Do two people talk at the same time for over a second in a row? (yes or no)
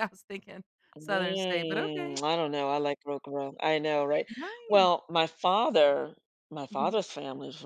yes